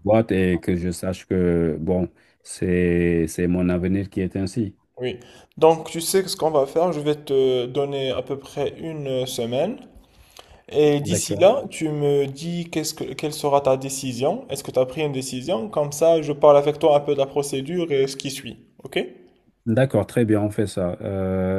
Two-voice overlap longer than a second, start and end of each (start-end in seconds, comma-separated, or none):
none